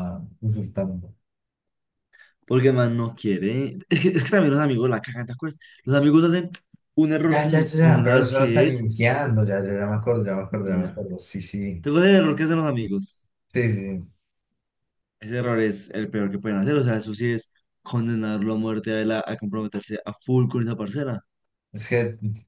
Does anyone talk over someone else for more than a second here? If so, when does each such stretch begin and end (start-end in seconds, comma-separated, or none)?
7.2-8.9